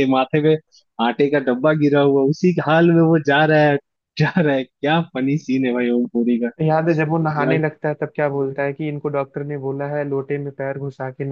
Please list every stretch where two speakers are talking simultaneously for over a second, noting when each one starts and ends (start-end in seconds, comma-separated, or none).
none